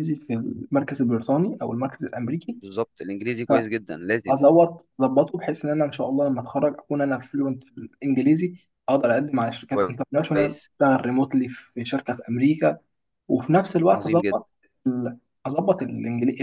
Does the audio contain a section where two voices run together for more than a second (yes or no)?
no